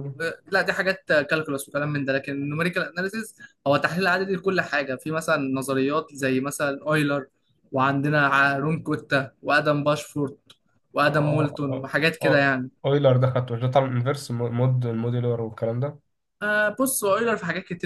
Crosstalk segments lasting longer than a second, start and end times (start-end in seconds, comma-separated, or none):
11.1-12.7